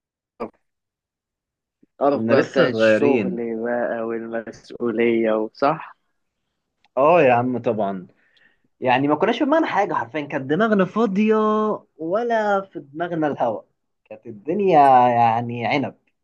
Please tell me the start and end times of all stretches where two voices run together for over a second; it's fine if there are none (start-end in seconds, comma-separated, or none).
2.1-3.4